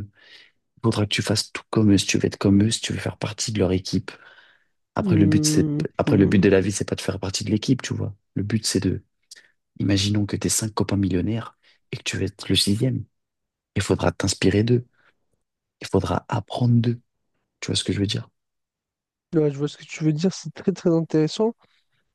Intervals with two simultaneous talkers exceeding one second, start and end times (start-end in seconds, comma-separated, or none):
5.0-6.5